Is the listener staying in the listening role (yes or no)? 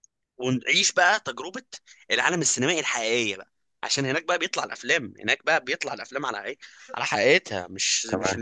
yes